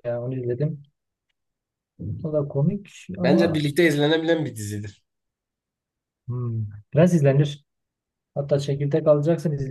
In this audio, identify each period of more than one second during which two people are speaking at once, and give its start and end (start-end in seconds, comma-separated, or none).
none